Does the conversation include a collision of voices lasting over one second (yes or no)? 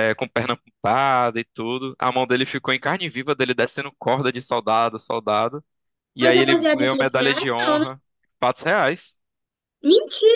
yes